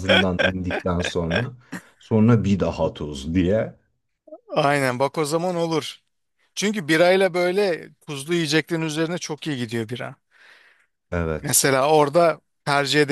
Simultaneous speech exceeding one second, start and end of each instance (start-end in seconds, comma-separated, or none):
none